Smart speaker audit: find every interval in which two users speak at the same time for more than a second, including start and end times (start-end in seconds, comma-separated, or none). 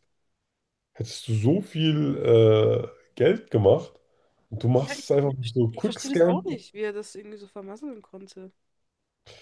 4.8-6.5